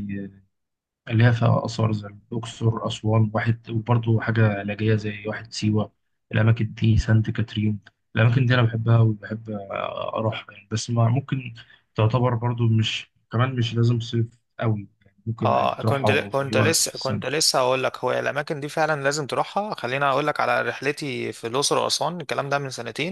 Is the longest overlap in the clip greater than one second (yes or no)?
yes